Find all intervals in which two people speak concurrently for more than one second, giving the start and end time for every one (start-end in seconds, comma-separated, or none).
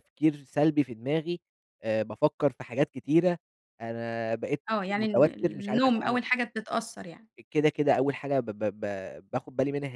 4.7-6.2